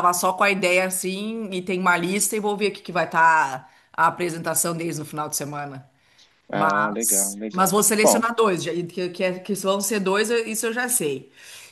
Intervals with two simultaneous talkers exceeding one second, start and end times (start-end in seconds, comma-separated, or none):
6.5-8.3